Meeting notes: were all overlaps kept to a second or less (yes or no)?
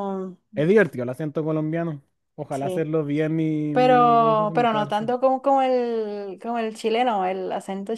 no